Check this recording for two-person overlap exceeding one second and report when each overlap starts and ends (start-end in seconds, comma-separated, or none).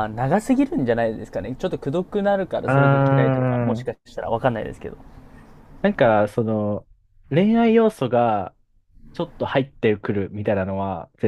2.7-3.9